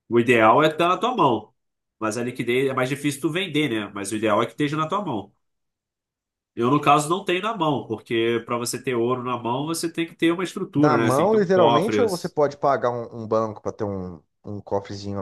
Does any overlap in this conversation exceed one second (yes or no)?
yes